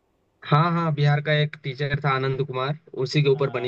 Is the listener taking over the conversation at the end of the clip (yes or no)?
yes